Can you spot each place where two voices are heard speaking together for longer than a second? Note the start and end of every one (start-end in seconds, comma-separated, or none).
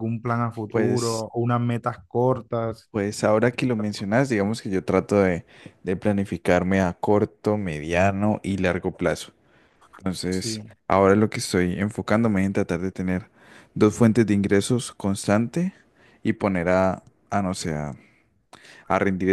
none